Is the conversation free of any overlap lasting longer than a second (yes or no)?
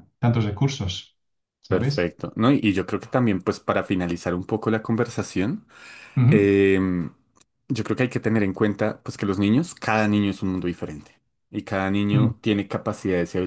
yes